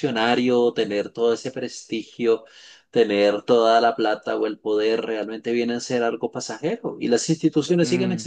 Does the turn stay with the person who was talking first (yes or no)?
yes